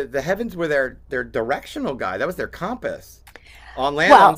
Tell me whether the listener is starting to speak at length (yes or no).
yes